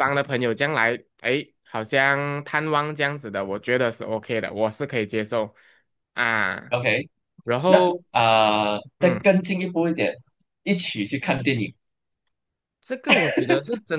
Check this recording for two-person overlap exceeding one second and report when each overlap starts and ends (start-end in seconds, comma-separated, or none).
none